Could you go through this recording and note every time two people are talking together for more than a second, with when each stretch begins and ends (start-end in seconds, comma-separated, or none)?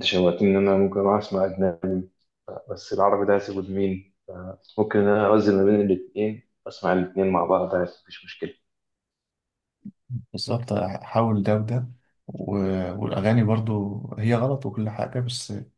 none